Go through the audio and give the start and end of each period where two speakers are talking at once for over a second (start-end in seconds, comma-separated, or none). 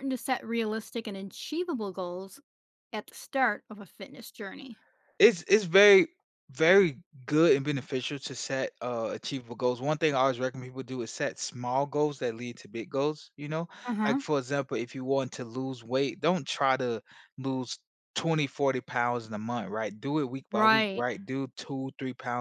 none